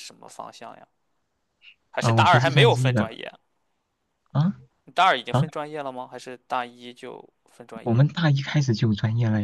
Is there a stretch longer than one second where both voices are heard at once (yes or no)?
yes